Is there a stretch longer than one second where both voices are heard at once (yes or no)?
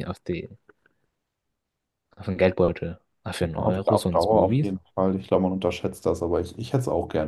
yes